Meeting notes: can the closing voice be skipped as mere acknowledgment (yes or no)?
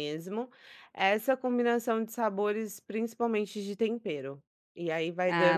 no